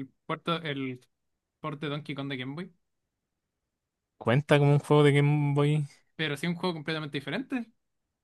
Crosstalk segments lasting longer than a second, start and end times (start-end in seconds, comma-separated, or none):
none